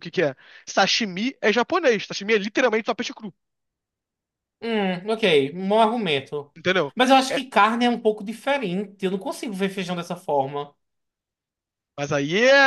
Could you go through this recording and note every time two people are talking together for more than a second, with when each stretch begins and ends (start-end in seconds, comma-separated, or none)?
none